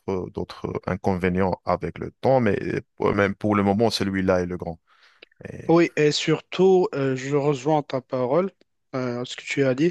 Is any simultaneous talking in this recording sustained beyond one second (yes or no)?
no